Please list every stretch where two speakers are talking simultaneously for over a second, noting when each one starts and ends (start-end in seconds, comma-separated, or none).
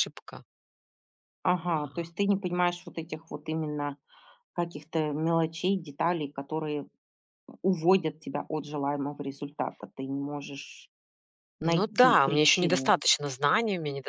11.7-12.9